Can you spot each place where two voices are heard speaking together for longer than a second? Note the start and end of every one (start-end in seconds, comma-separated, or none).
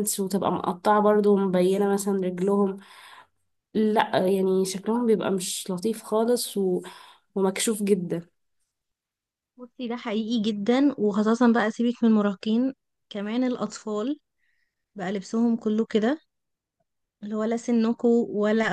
none